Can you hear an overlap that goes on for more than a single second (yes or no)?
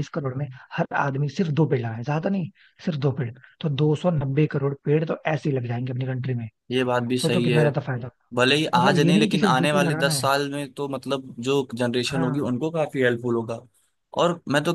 yes